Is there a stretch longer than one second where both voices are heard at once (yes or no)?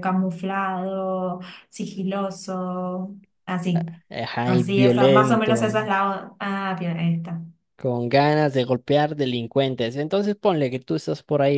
yes